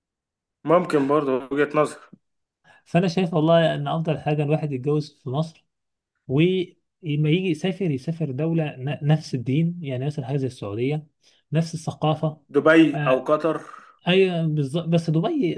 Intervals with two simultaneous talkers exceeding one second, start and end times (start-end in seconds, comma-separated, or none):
none